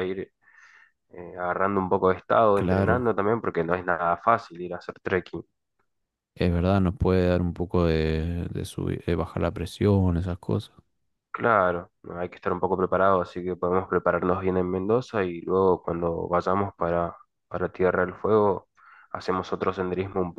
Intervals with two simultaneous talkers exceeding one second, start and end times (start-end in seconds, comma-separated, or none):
none